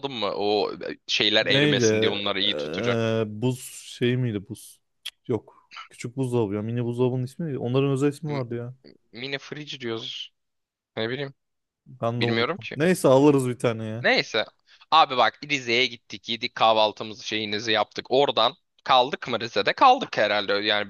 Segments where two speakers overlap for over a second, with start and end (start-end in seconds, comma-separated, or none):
1.4-3.1